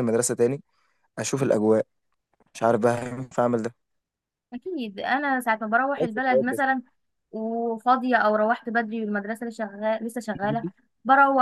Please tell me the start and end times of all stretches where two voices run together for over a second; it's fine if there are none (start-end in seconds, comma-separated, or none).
none